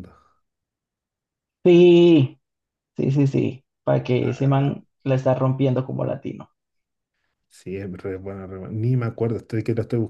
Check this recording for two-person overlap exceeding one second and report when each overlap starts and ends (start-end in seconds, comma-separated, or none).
none